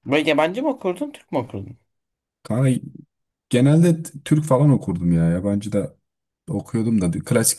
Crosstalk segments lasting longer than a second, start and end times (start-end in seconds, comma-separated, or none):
none